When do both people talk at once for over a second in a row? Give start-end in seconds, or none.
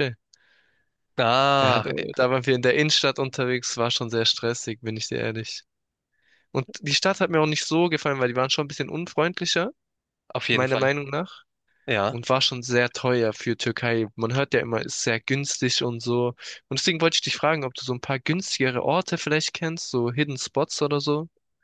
none